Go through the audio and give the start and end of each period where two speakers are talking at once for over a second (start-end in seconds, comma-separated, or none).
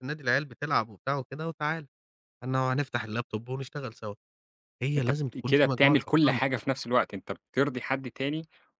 5.0-6.7